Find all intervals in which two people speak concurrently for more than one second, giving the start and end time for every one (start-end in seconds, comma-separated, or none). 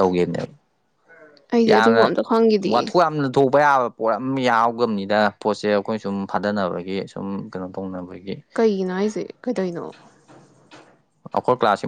none